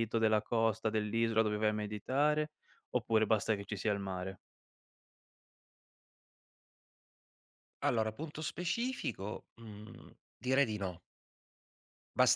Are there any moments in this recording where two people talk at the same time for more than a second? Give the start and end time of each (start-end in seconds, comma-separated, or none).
none